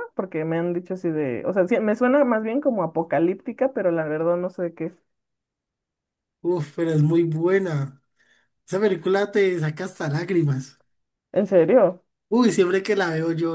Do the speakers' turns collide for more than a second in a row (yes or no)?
no